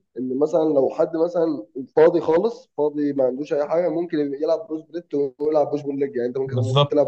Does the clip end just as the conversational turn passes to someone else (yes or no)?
no